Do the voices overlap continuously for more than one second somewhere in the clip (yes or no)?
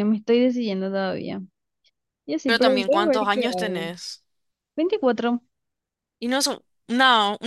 yes